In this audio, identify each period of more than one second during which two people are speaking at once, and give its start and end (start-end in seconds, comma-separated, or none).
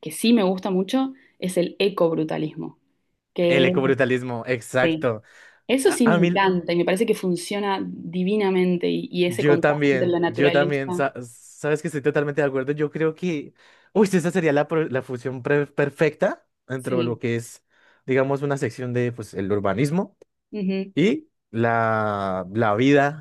9.3-11.0